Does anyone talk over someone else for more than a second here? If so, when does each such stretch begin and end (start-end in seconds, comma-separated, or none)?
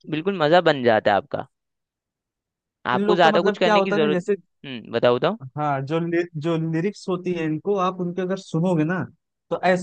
2.9-4.3